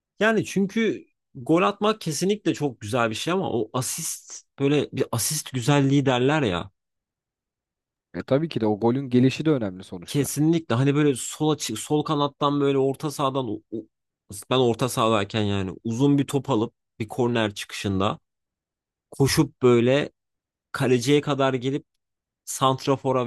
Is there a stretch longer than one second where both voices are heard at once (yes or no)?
no